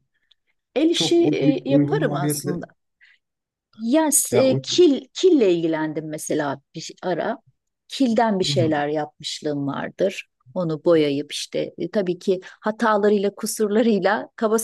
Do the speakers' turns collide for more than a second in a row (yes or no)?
yes